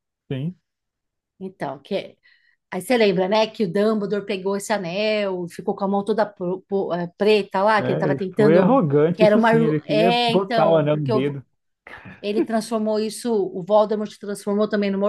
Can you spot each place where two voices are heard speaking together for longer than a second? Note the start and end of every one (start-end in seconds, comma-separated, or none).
7.8-11.4